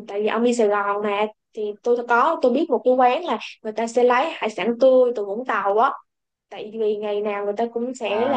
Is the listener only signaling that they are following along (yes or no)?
yes